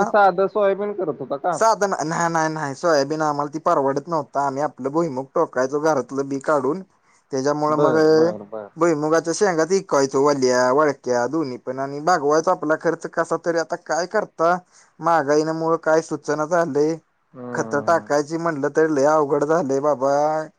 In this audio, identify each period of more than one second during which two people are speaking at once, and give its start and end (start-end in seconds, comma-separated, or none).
none